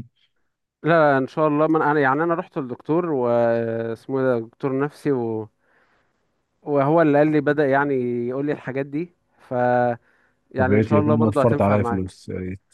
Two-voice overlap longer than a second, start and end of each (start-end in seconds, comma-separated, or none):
10.6-12.2